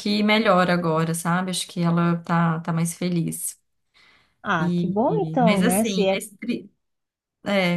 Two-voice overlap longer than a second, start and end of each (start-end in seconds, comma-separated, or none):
4.6-6.2